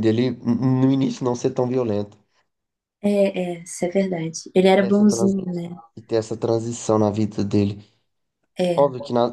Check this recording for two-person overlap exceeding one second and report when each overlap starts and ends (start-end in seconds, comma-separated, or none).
none